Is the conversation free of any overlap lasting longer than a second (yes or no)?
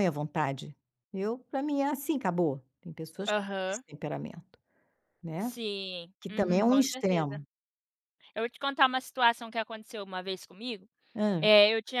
no